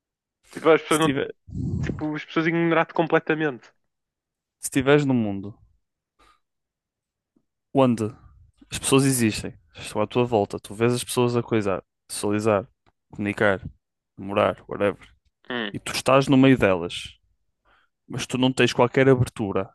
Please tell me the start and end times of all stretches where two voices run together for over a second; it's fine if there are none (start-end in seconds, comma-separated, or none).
none